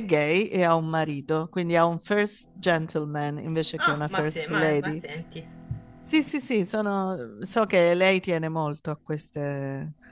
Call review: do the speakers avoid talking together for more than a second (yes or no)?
no